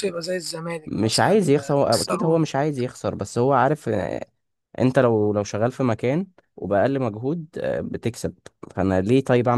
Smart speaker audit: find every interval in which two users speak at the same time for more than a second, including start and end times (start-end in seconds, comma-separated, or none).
0.8-2.5